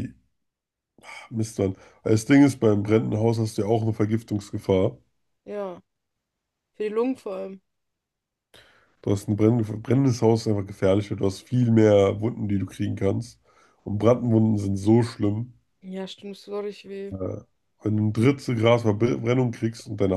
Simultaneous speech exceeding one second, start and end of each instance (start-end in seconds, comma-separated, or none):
none